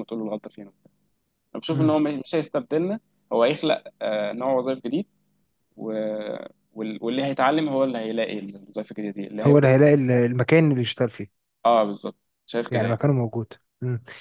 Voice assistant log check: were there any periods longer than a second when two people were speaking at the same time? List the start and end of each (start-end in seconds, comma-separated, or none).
none